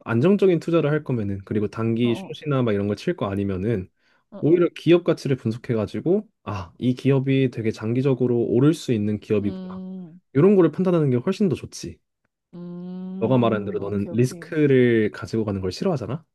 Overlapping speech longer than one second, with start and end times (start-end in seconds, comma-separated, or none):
13.2-14.5